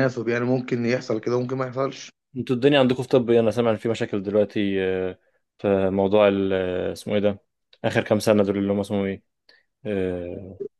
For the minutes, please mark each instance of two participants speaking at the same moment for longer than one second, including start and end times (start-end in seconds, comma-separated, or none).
none